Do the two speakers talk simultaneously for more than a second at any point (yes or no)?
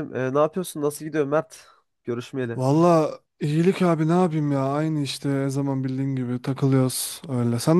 no